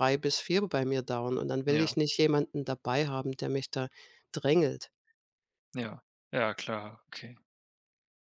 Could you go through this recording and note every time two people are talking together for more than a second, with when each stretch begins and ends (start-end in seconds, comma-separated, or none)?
none